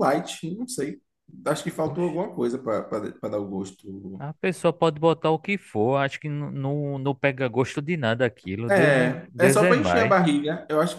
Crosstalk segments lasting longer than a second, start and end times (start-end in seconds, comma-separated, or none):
8.7-10.2